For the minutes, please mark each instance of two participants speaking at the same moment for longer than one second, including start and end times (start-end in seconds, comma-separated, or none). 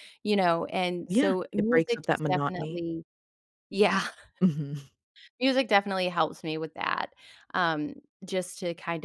1.1-2.8